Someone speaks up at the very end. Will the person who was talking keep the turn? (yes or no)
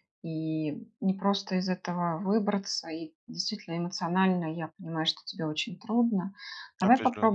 yes